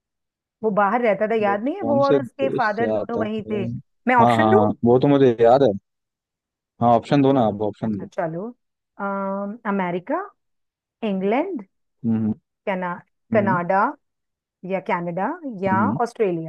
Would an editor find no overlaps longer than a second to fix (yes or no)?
no